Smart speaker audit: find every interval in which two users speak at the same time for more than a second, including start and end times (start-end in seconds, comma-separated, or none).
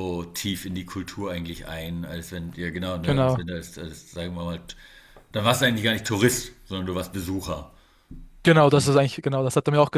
none